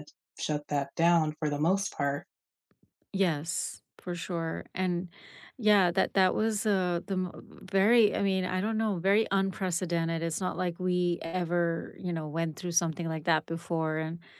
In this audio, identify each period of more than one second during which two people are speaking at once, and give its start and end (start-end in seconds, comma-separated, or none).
none